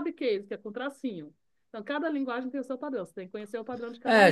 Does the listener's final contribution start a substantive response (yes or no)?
yes